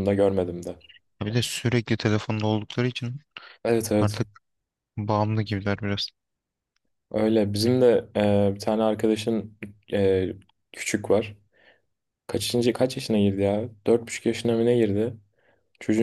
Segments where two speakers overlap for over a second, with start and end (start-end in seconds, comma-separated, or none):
none